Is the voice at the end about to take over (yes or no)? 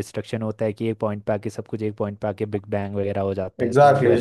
yes